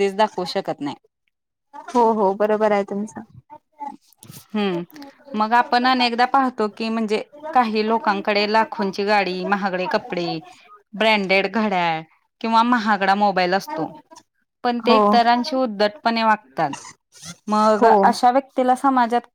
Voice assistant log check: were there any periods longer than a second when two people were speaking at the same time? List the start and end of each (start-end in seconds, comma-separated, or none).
none